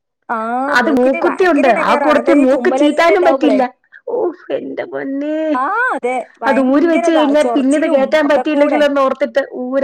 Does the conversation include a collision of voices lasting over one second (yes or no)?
yes